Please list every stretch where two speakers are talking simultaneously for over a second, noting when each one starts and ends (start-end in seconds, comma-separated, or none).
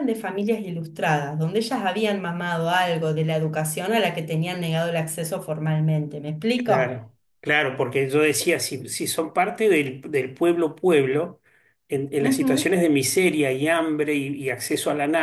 none